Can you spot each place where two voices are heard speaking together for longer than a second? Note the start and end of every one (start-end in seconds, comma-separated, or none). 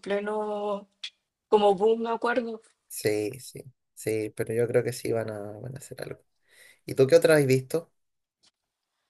none